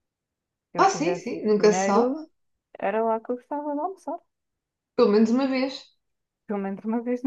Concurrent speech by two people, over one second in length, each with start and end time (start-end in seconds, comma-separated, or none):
0.8-2.1